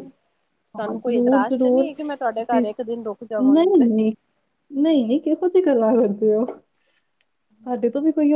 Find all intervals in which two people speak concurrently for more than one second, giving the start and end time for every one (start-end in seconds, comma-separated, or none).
0.8-2.6